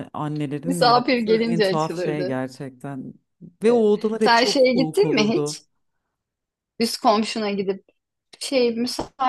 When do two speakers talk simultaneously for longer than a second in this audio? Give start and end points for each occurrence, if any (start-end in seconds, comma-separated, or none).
0.6-2.4, 3.7-5.6